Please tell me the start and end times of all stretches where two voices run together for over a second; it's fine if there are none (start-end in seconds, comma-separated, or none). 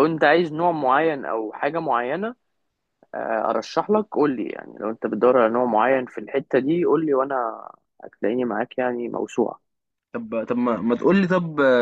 none